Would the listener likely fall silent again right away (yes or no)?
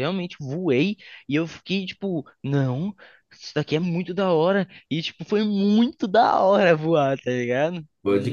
no